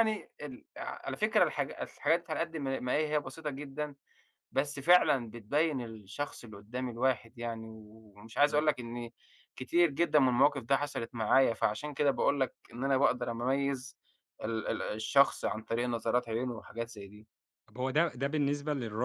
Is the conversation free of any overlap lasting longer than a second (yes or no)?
yes